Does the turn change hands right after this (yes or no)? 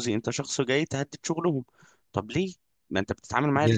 yes